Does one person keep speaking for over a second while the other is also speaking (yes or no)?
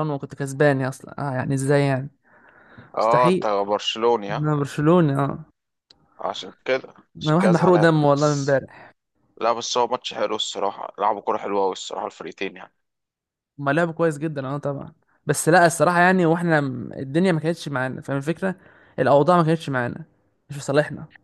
yes